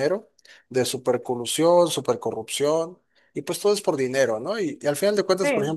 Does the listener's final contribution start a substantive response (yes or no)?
no